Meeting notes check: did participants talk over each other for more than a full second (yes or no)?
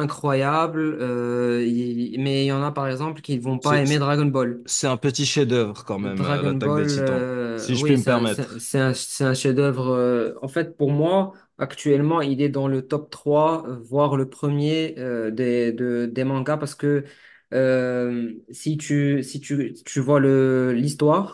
yes